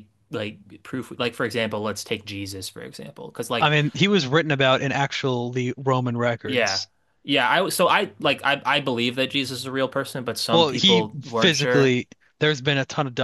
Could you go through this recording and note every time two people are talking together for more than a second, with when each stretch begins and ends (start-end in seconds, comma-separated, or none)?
10.5-11.9